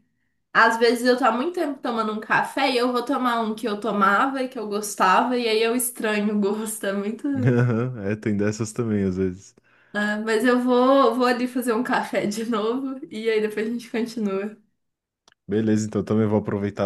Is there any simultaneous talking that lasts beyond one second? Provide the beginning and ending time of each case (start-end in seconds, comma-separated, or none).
none